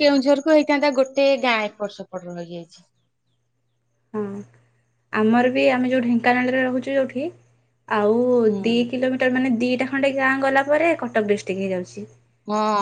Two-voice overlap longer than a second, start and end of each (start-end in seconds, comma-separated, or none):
none